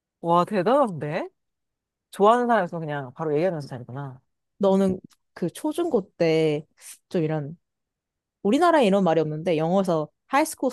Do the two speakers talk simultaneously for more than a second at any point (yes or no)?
no